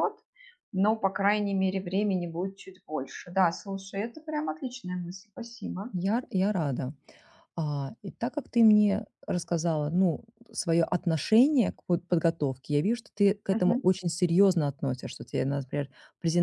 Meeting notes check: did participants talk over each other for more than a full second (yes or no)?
no